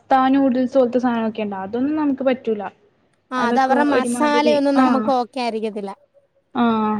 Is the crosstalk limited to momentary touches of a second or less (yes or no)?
no